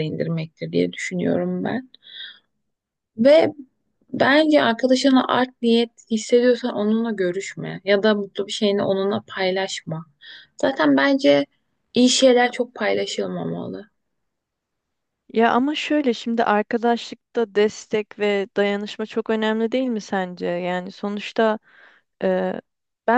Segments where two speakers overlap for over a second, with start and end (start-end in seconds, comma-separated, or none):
none